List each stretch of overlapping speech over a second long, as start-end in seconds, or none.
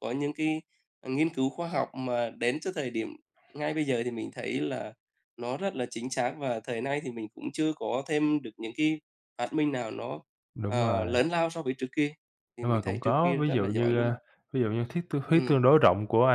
12.6-14.1